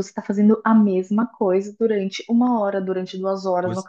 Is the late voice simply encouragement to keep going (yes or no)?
yes